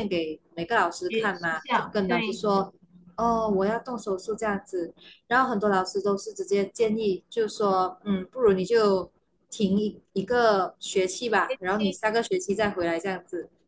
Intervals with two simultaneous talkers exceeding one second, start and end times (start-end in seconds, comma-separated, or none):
1.1-2.4